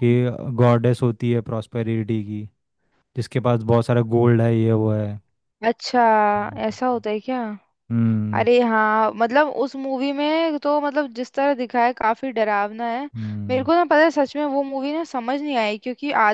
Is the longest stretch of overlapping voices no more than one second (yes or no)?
yes